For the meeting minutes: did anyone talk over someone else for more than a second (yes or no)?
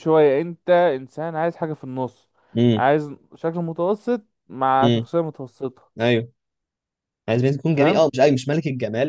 no